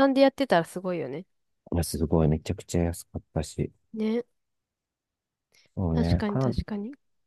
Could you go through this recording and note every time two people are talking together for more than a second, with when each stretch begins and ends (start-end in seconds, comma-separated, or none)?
none